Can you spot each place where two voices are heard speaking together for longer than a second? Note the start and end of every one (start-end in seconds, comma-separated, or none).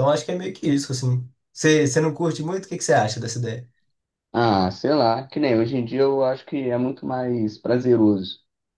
none